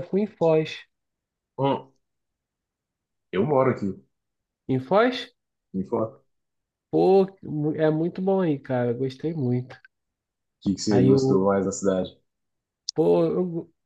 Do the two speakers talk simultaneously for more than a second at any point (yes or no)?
no